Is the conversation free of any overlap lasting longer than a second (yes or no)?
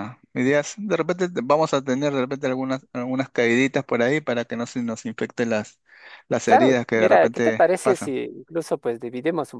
no